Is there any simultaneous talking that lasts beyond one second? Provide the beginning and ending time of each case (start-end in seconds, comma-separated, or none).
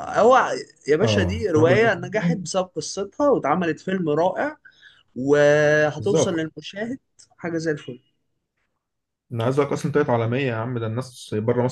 1.0-2.4